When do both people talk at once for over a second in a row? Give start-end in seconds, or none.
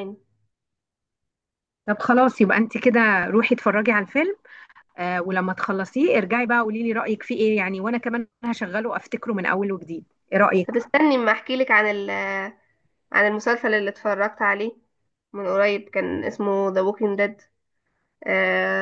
none